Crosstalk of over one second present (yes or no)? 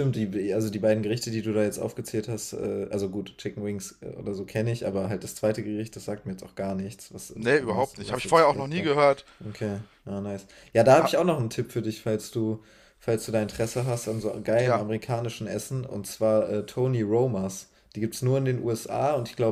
yes